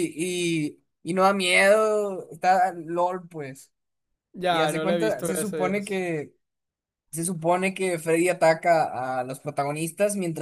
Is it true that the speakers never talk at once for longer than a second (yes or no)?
no